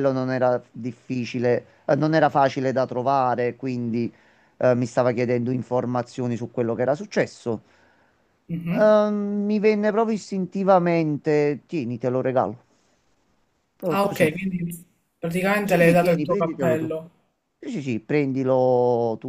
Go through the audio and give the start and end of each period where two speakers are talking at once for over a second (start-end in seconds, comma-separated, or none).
15.6-16.9